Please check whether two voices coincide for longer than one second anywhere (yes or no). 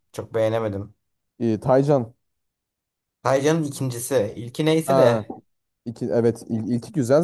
no